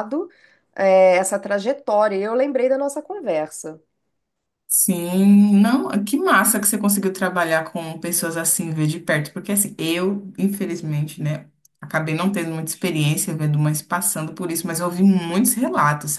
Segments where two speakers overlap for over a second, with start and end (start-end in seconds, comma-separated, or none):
none